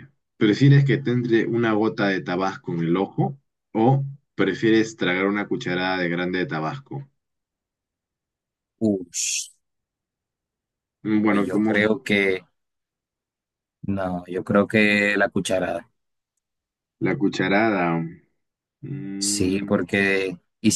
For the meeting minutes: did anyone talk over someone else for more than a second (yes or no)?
no